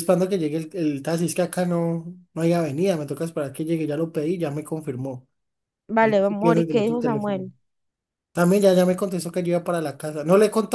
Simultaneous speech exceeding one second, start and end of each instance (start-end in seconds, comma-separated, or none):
6.0-7.5